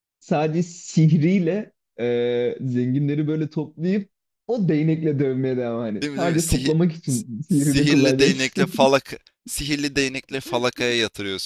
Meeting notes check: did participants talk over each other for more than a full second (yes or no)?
yes